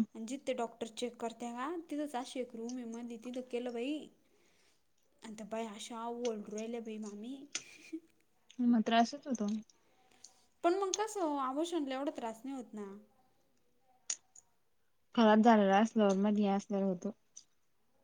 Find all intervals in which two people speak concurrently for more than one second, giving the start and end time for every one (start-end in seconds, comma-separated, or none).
none